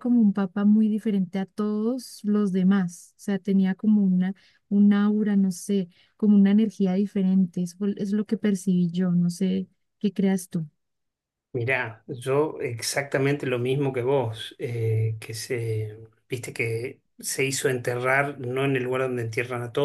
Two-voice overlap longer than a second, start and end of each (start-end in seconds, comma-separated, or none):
none